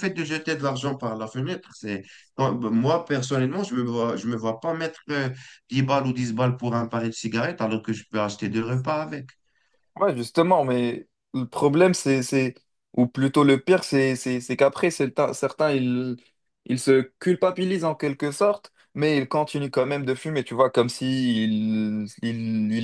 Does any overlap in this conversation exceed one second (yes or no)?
no